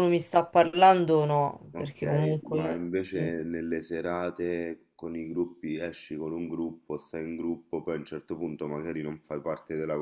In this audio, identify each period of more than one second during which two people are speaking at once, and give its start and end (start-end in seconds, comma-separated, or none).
1.7-3.3